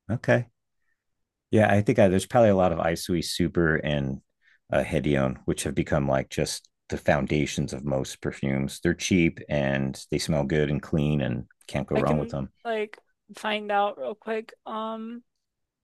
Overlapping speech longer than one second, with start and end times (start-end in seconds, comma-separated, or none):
none